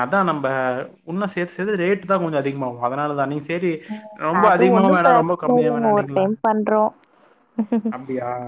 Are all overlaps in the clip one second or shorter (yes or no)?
no